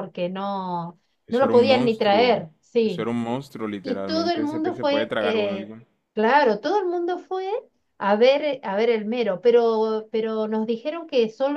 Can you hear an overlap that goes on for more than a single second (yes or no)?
yes